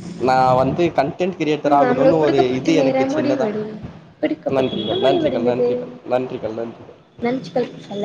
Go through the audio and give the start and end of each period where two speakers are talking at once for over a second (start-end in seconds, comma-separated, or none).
1.7-3.5